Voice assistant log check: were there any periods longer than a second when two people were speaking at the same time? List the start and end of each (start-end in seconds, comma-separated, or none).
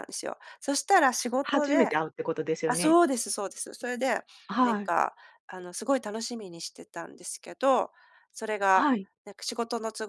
none